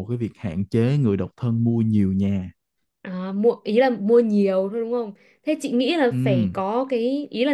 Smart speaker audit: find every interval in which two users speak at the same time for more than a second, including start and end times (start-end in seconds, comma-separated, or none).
none